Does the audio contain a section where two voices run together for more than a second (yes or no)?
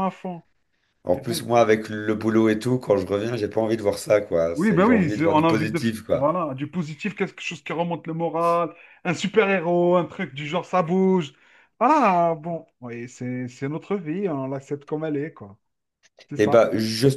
yes